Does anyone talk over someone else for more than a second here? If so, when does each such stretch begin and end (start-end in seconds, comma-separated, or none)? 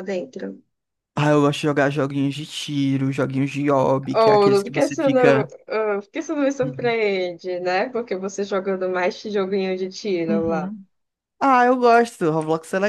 4.1-5.5